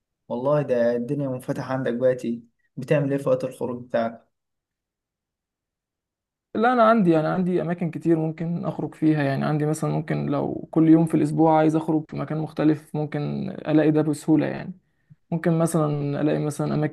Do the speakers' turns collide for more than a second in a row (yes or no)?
no